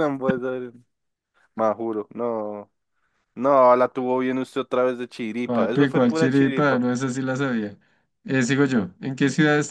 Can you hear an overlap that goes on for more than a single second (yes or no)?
yes